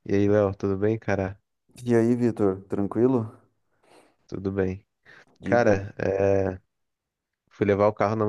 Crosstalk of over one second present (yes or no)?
no